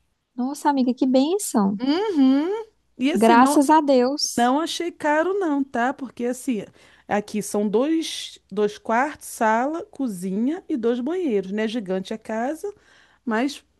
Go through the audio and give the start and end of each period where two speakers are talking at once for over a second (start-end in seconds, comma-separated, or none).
none